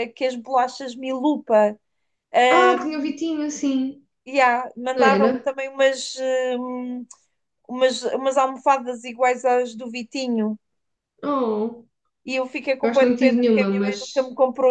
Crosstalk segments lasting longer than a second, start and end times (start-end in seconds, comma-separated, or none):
12.8-14.2